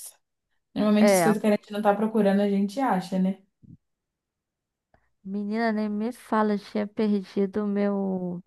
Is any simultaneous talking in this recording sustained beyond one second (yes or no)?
no